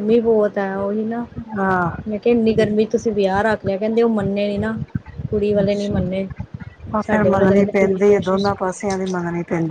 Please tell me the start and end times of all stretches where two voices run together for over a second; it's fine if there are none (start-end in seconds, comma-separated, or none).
7.1-8.7